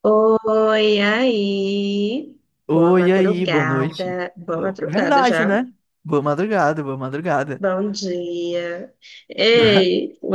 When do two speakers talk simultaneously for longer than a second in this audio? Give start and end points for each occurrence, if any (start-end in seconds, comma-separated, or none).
2.7-5.6